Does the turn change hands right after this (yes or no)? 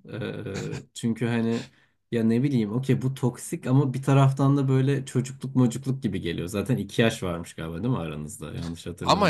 yes